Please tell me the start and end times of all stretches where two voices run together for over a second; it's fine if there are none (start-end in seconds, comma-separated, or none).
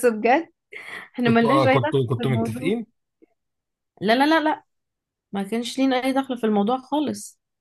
1.2-2.7